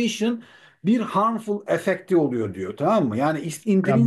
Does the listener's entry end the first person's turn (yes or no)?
yes